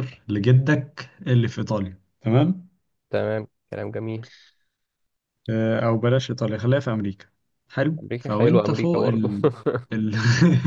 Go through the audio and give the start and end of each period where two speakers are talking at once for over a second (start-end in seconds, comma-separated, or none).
8.0-9.3